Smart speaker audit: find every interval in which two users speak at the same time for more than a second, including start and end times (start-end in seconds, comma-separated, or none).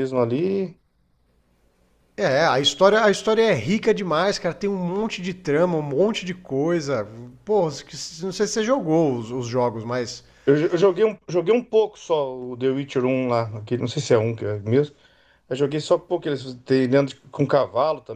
none